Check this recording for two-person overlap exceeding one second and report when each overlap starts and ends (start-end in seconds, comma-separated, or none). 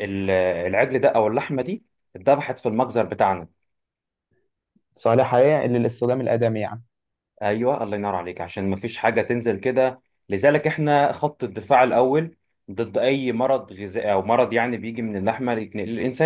none